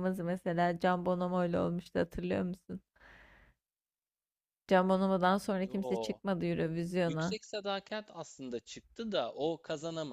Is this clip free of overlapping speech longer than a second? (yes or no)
yes